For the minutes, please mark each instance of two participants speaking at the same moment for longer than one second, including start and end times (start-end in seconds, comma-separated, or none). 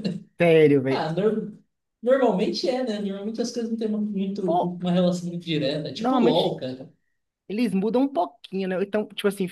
none